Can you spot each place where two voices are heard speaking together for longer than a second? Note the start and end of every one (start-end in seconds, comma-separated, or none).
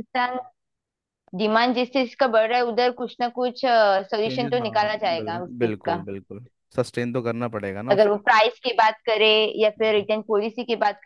4.2-6.0